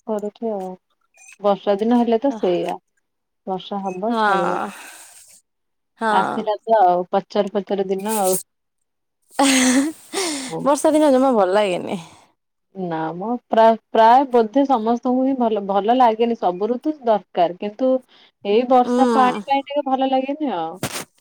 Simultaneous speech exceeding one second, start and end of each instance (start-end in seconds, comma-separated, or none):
none